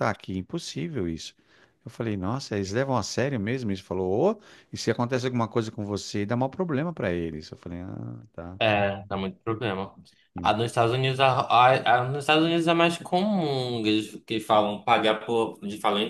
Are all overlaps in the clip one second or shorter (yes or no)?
yes